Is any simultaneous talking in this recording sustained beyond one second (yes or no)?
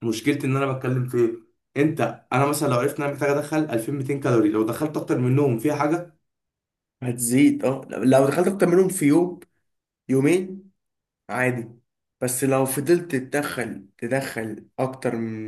no